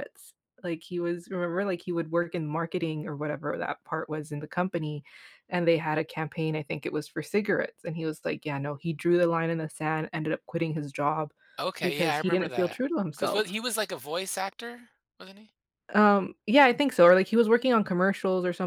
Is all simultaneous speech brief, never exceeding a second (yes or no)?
no